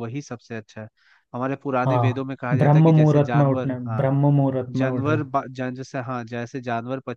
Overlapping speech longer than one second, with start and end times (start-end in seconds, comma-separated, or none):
1.8-4.1